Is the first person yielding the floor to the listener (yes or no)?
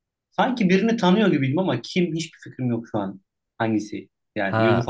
yes